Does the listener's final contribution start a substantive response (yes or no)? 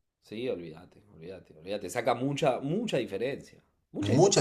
yes